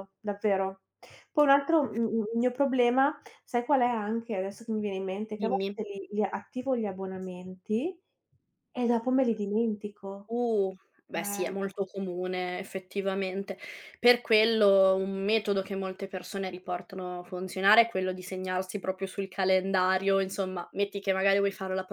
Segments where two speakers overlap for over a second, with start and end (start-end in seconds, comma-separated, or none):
none